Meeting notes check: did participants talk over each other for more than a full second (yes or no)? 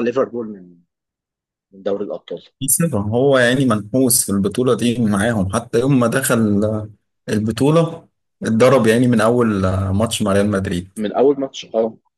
no